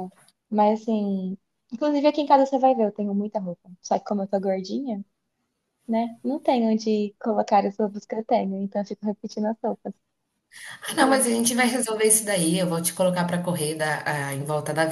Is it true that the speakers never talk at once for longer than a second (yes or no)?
yes